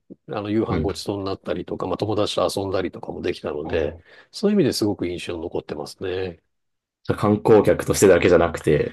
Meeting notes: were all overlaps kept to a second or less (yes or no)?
yes